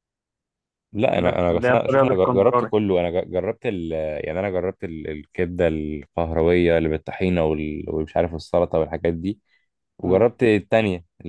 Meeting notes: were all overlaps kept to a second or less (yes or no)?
no